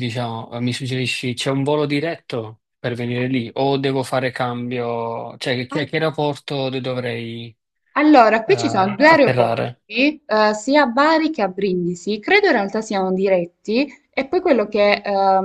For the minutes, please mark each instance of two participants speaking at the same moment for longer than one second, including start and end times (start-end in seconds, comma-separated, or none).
8.4-9.6